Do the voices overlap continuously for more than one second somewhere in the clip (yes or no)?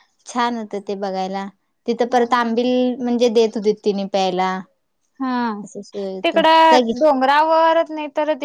no